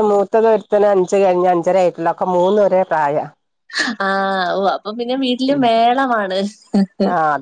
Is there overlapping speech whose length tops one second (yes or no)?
no